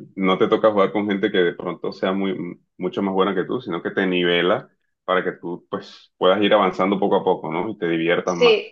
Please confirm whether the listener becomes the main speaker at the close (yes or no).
yes